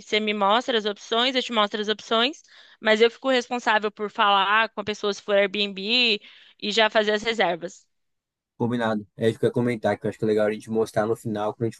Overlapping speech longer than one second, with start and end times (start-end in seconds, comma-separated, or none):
none